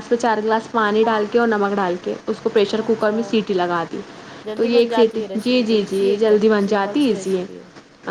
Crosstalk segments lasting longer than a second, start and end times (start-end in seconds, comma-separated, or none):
4.5-7.5